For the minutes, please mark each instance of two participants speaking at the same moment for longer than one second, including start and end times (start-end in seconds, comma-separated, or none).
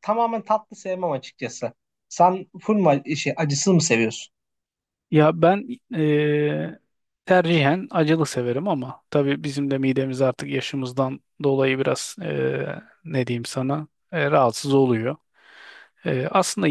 none